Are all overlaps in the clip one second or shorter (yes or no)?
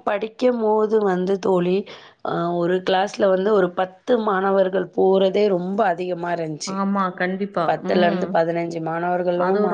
yes